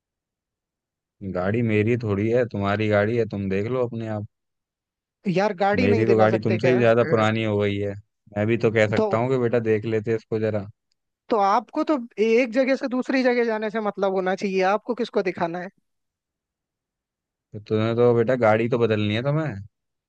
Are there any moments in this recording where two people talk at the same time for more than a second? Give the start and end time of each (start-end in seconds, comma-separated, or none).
5.8-7.2